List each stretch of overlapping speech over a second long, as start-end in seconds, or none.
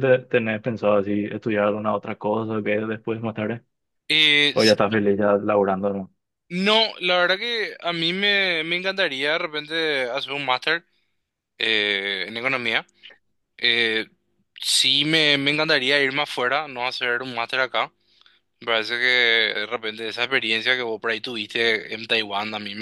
none